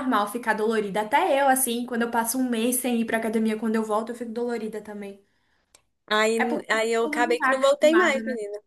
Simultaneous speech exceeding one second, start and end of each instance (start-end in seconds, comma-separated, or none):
6.4-8.2